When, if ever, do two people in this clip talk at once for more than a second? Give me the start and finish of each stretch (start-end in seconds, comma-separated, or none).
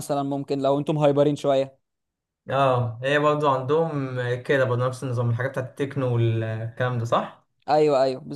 none